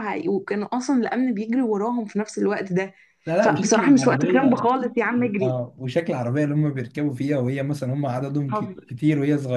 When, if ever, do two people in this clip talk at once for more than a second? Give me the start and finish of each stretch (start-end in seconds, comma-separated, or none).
3.4-4.7